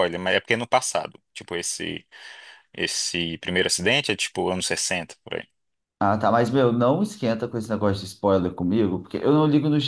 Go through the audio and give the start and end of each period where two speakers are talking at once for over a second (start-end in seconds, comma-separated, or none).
none